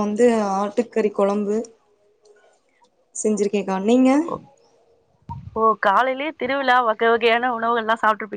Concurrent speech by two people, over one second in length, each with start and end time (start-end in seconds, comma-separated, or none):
none